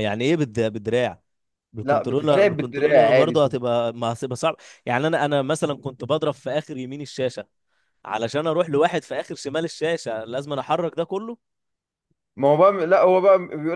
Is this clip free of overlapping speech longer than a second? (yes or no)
no